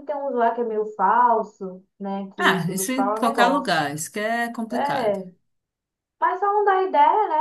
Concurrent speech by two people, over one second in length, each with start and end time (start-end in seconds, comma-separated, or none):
2.4-3.9